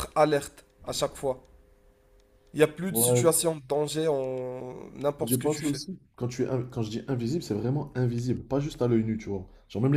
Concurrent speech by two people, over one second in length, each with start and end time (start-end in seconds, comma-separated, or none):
none